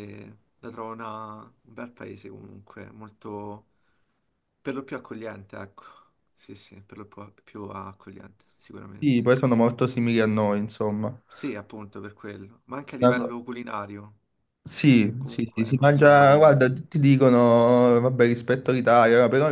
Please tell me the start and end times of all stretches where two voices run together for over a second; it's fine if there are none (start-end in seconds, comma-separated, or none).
15.2-16.5